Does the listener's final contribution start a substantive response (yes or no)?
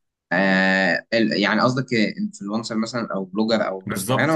yes